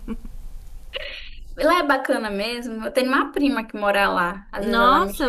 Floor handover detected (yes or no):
yes